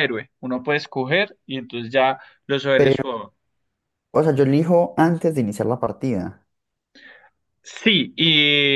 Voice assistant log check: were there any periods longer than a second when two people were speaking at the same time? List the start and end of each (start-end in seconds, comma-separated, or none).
none